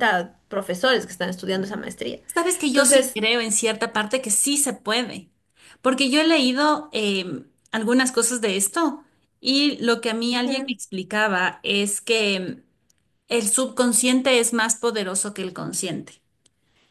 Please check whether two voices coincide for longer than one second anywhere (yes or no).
no